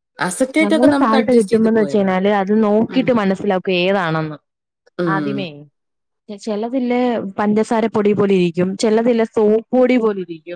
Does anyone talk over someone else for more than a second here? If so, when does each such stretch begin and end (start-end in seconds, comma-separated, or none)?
0.6-2.1